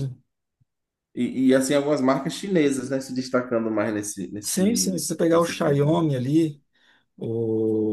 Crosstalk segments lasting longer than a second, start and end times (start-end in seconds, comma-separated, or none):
4.4-6.0